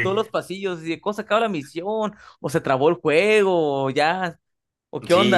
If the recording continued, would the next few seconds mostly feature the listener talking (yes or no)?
yes